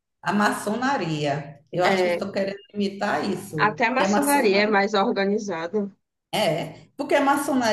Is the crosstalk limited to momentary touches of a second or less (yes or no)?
no